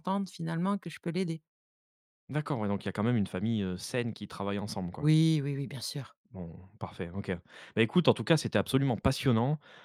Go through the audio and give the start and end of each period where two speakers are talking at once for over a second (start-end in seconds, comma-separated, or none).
none